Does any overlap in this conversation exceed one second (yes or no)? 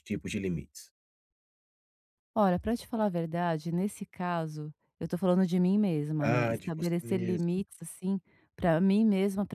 yes